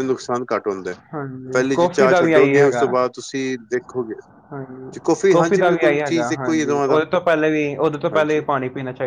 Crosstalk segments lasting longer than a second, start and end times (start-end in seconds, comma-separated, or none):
1.5-2.8, 5.4-7.0